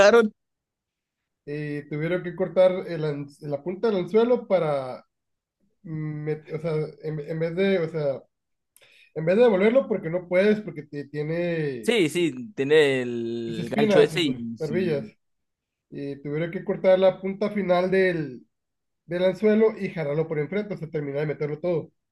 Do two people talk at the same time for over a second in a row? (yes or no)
yes